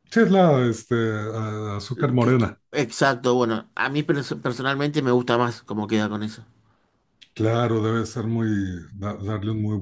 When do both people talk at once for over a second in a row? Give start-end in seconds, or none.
none